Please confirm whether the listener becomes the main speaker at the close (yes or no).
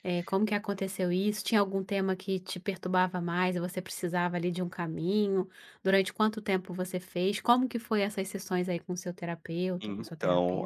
yes